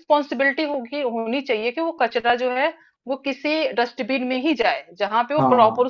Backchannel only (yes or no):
yes